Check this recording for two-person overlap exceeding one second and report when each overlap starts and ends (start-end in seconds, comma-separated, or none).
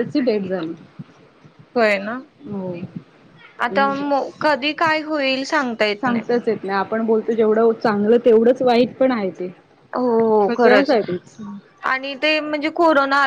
none